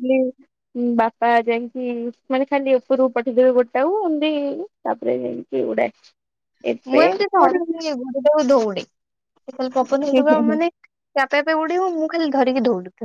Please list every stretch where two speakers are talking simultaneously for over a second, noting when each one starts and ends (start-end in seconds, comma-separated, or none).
none